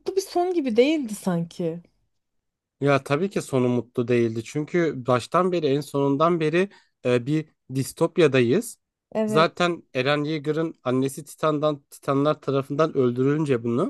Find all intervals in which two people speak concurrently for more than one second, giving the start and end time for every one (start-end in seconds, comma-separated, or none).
none